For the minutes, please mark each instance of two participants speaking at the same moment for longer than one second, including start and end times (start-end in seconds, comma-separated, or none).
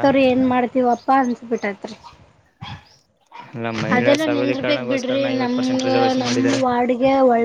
4.0-5.5